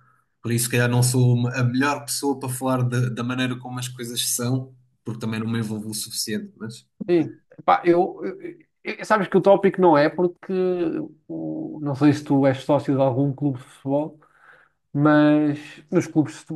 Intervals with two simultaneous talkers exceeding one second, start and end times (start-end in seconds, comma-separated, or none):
none